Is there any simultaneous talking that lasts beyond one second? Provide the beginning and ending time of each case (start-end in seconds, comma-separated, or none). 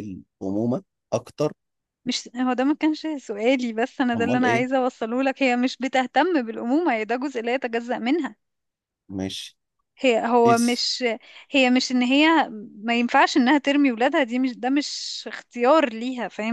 none